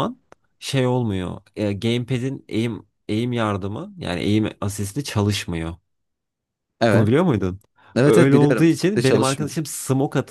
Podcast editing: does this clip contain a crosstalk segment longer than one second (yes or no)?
yes